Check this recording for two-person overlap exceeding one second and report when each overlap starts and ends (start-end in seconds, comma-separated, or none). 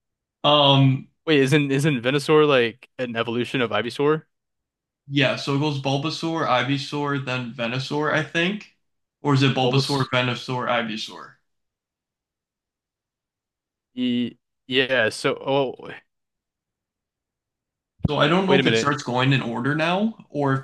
none